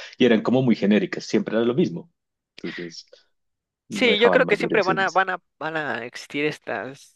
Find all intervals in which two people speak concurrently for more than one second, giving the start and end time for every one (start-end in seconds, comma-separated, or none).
3.9-5.2